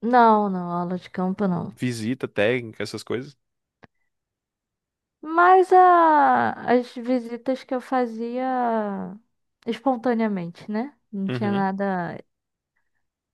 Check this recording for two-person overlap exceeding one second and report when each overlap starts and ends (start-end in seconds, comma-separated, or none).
none